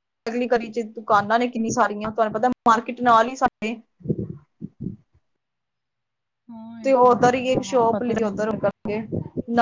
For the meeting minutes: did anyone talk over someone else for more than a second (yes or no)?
yes